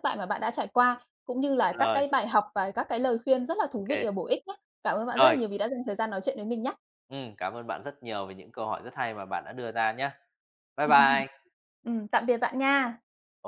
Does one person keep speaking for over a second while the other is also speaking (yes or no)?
no